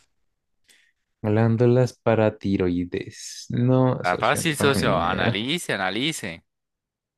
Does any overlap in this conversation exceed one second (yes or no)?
yes